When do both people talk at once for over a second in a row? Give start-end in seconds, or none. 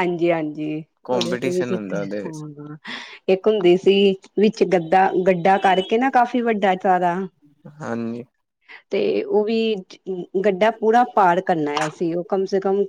1.0-2.4